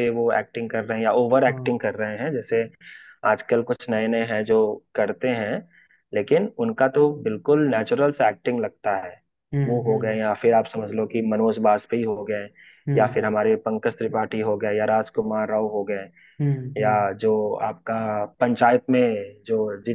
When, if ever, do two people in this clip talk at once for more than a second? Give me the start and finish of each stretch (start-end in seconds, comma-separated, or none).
none